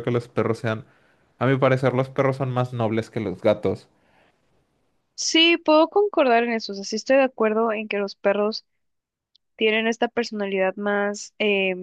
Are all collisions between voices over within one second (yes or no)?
yes